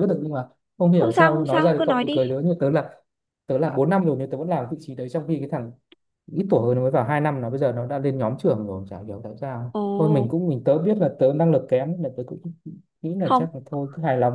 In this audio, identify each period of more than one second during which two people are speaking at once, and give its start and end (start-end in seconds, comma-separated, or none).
0.9-2.2